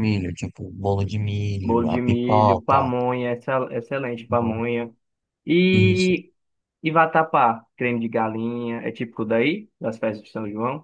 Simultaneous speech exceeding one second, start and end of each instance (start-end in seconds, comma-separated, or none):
1.6-2.9